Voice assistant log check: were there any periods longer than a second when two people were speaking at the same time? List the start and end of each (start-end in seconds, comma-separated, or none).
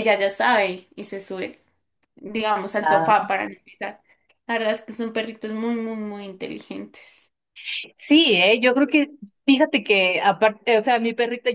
none